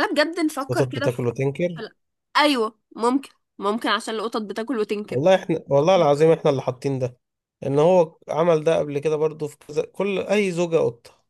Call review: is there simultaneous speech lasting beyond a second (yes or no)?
no